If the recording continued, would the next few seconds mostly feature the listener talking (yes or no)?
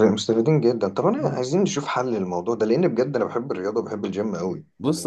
yes